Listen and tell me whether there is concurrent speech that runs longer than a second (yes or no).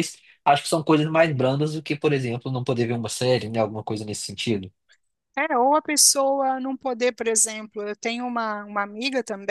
no